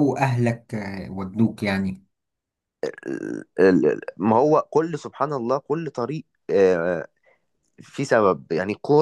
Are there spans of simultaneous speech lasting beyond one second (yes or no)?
no